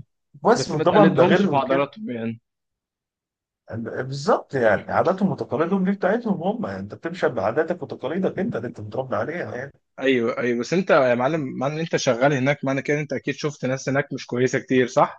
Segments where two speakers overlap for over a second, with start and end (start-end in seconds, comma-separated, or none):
0.5-1.9